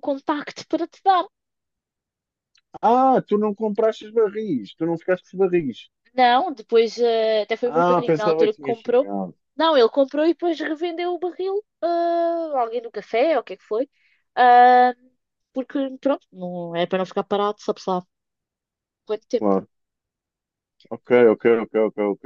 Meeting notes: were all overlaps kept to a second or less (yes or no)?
no